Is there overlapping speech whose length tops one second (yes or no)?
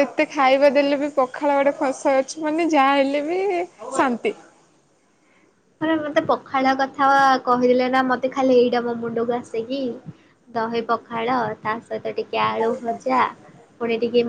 no